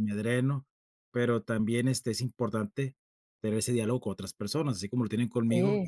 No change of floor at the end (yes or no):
yes